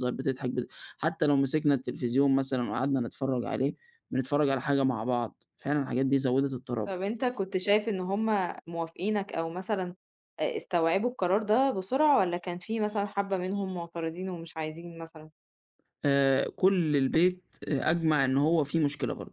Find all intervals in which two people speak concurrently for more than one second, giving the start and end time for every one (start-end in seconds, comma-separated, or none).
none